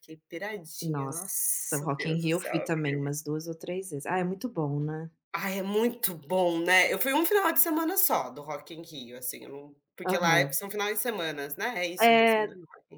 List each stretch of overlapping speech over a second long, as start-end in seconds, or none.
0.8-3.2